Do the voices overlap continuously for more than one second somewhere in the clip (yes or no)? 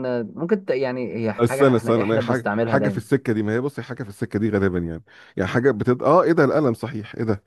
yes